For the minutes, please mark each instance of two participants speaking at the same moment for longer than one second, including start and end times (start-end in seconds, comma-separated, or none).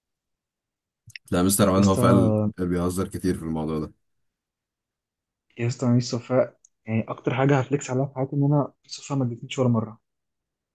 none